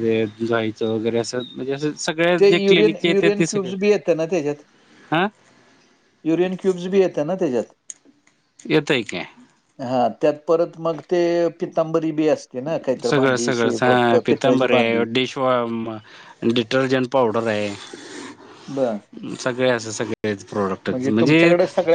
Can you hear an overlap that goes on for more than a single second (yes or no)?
no